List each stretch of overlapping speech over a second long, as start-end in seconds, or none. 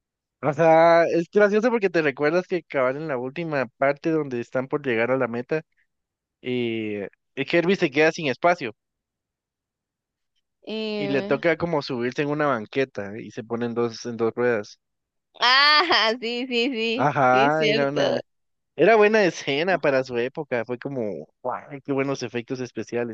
16.9-18.2